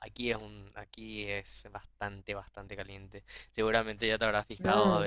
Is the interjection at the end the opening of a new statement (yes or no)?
no